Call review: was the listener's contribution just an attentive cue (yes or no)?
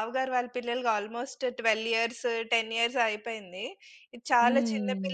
yes